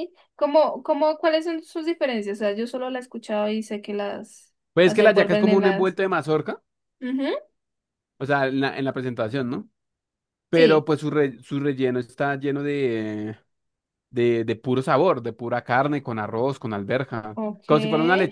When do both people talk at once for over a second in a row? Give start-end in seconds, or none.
4.7-6.0